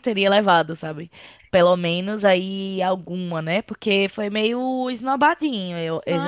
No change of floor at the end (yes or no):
no